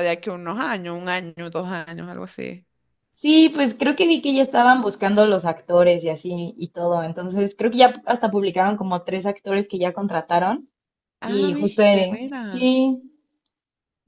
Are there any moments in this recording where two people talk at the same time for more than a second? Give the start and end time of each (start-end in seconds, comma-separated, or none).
11.2-12.7